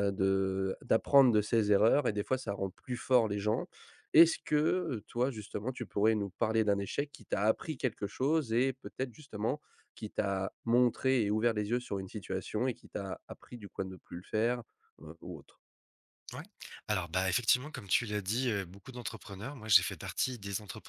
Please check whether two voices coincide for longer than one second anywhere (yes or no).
no